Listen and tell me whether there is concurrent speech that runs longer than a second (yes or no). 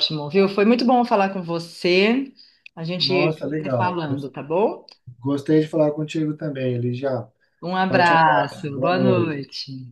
yes